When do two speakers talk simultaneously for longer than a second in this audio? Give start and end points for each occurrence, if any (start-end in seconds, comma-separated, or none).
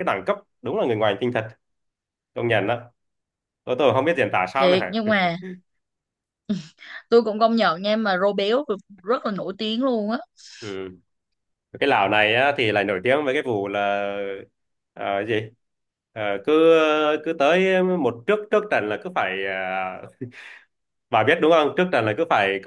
none